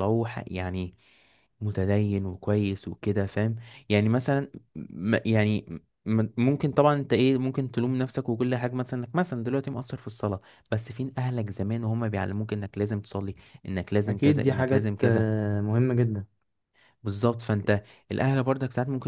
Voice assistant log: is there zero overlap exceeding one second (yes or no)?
no